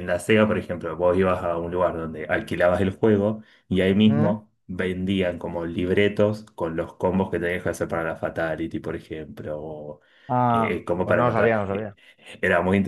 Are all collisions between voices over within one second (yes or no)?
no